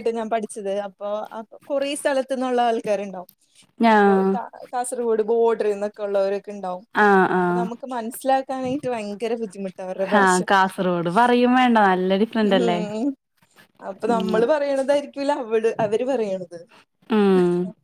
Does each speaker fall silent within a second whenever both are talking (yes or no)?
yes